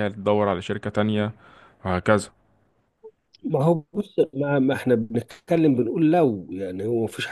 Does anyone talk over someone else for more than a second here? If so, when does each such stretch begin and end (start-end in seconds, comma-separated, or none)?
none